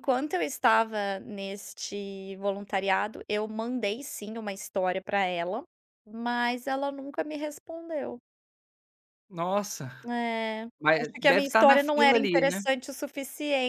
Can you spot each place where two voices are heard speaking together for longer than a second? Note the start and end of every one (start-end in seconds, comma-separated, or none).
10.8-12.6